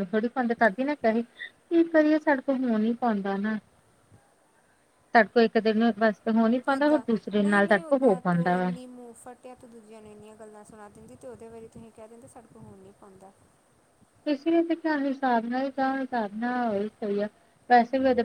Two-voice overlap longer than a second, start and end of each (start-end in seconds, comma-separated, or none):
none